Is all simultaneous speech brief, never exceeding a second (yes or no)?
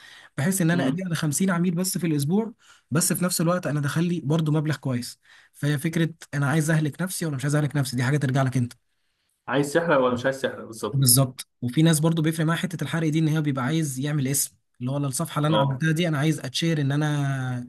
yes